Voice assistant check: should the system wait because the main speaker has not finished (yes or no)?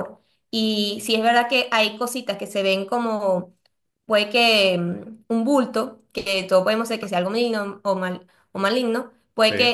yes